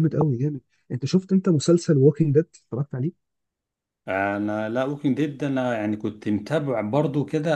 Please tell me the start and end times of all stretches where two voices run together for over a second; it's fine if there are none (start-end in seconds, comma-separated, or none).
none